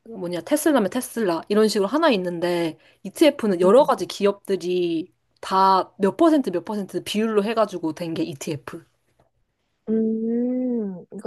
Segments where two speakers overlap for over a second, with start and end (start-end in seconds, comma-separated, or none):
none